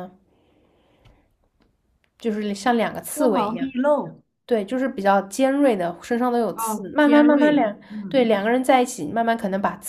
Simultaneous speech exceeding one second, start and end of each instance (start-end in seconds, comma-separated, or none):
6.5-8.3